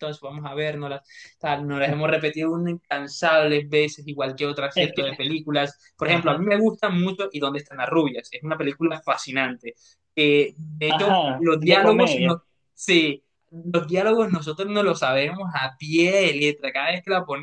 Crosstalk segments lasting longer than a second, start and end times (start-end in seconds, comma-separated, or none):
10.9-12.4